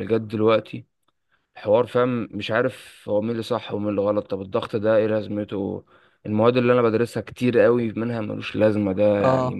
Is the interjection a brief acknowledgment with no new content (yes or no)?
yes